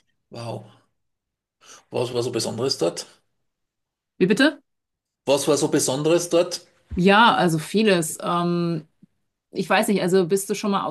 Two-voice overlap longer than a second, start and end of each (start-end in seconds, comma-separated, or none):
none